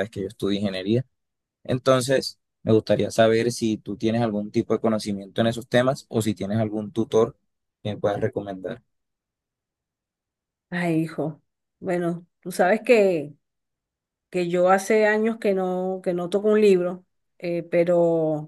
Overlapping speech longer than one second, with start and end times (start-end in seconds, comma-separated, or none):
none